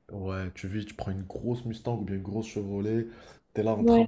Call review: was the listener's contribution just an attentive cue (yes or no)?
yes